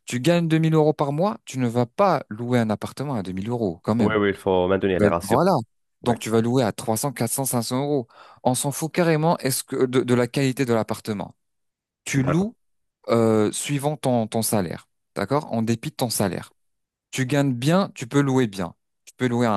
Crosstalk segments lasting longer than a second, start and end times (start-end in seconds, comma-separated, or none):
none